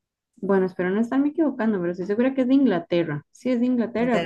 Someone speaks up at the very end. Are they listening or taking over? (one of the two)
taking over